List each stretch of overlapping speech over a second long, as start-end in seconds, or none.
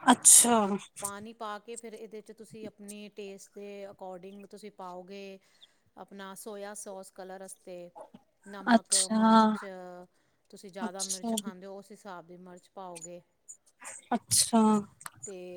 none